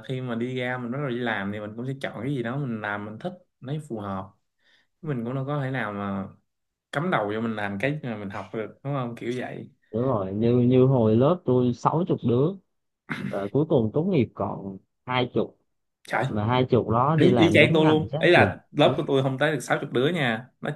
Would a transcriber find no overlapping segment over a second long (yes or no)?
no